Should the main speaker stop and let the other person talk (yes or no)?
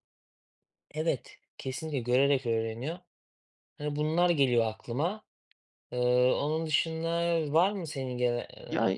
yes